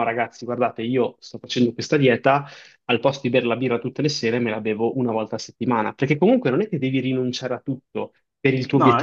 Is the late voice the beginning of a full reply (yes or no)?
no